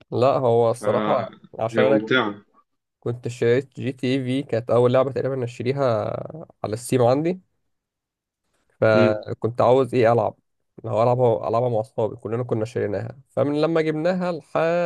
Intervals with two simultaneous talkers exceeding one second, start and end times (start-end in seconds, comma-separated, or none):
0.7-2.1